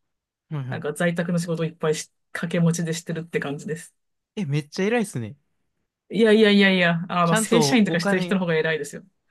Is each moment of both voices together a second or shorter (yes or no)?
no